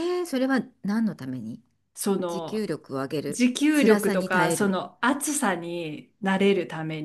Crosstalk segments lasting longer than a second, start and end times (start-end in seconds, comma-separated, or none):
3.3-4.8